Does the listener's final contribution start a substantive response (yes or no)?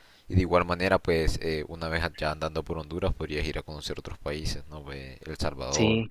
no